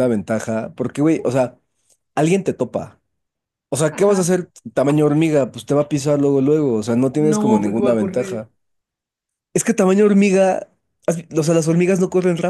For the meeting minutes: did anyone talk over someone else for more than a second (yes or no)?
yes